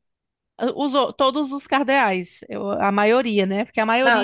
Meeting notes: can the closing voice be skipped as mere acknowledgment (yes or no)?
no